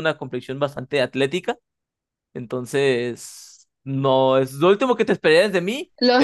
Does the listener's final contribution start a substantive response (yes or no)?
yes